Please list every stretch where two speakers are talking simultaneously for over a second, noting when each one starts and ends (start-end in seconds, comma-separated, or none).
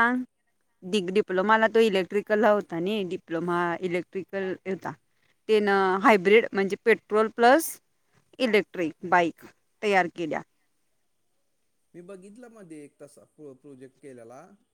none